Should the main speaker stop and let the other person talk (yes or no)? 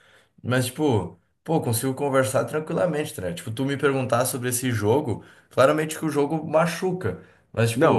no